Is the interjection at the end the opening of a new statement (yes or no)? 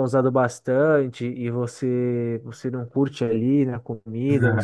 yes